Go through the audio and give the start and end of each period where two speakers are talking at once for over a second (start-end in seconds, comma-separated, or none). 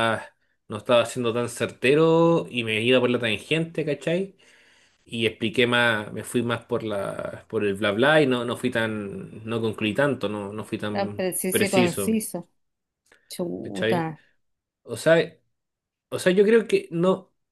10.9-12.2